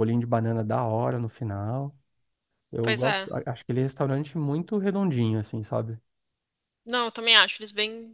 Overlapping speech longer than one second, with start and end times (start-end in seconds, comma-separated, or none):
none